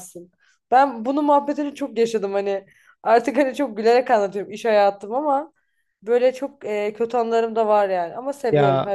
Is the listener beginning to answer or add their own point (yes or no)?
yes